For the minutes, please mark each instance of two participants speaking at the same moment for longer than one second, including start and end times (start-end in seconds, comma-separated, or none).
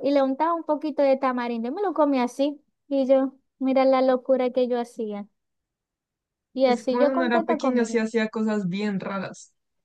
6.6-8.0